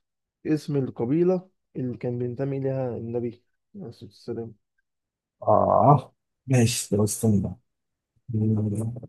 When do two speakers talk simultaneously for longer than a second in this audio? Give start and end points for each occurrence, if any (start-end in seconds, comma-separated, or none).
none